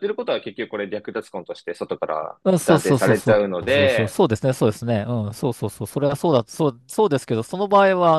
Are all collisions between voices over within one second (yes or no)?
no